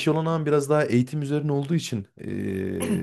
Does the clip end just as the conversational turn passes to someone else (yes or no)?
no